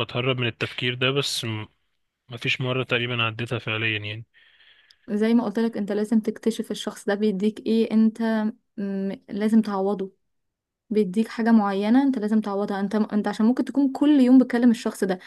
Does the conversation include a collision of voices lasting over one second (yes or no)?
no